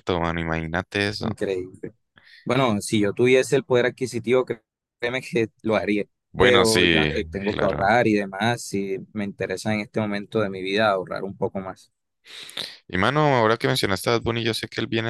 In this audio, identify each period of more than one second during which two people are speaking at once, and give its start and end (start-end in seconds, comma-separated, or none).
6.3-7.9